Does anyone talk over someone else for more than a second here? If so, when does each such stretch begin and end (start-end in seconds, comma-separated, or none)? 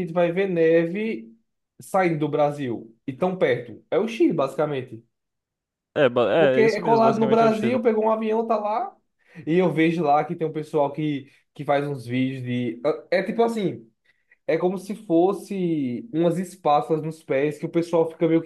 6.4-7.8